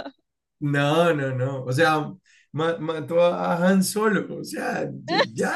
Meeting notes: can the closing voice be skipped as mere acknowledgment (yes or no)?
no